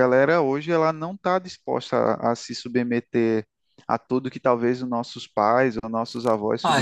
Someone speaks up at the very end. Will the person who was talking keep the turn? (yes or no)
no